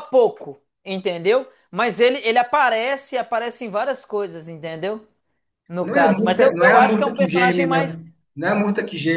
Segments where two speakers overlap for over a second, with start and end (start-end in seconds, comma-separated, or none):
5.8-8.0